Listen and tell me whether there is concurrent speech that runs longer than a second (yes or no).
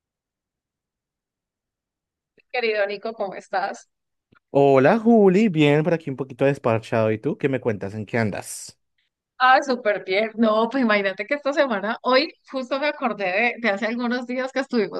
no